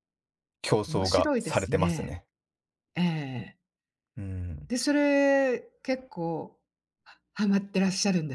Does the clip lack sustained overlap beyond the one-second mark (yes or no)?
no